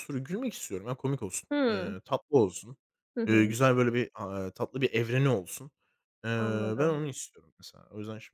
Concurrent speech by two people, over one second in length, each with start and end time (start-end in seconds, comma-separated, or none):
none